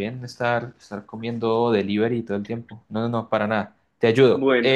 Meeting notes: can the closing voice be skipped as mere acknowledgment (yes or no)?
no